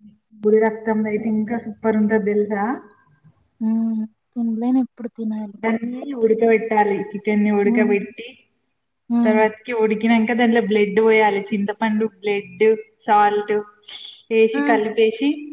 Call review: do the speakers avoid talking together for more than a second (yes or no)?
yes